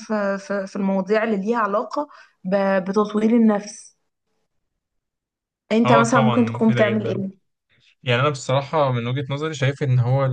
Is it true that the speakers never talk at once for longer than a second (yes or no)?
no